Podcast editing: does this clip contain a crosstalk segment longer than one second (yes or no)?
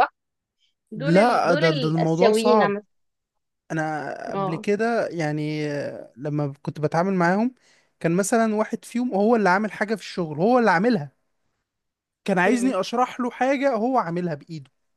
yes